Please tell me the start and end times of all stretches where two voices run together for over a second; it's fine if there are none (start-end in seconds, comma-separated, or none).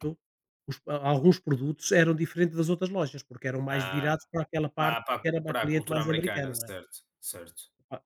4.8-6.7